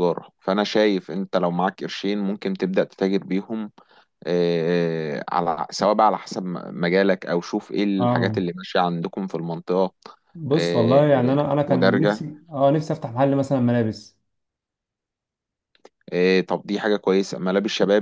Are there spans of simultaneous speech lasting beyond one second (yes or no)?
yes